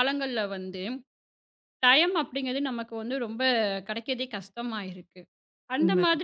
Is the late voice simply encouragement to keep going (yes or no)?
yes